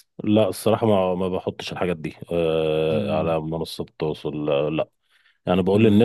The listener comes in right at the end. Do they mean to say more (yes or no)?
no